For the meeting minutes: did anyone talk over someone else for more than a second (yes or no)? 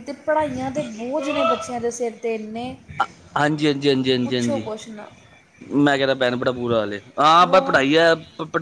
no